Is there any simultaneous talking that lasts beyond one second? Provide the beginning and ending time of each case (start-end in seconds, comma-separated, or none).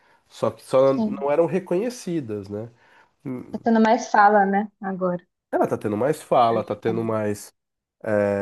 none